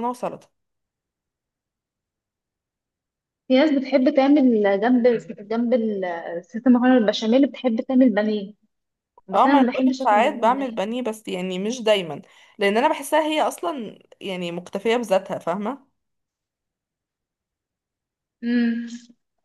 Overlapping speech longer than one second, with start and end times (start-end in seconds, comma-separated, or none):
9.3-10.8